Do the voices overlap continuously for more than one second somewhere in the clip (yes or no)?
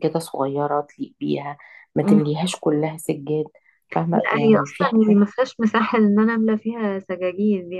yes